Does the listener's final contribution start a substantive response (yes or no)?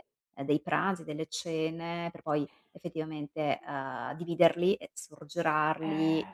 no